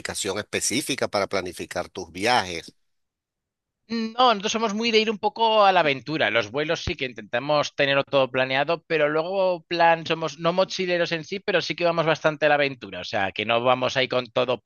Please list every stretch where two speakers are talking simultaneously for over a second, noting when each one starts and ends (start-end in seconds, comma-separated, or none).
none